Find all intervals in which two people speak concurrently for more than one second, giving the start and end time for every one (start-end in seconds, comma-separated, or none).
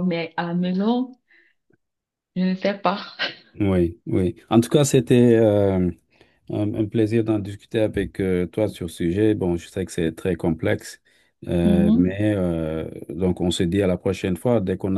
none